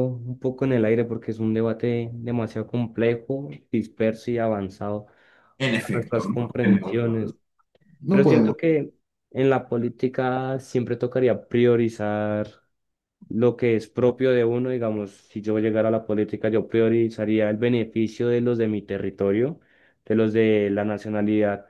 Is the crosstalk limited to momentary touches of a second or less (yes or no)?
no